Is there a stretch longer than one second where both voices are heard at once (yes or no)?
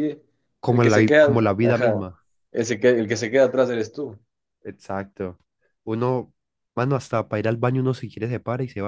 yes